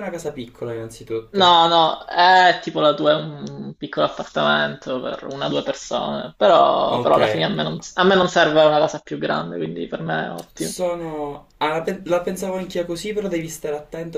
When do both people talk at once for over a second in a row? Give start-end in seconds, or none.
none